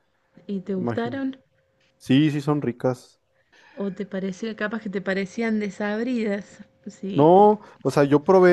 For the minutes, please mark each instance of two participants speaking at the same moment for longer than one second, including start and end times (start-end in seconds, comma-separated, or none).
none